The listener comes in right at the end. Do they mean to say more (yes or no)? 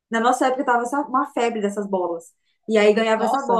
no